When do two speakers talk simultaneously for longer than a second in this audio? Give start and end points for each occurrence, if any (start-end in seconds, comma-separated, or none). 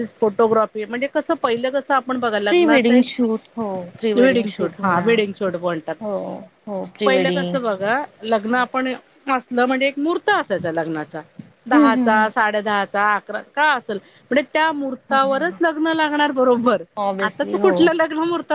none